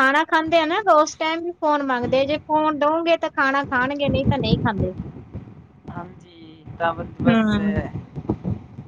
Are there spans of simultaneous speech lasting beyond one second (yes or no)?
no